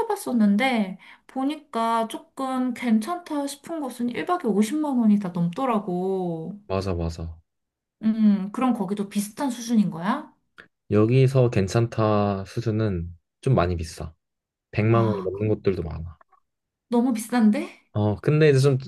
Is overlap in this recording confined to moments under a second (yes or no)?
yes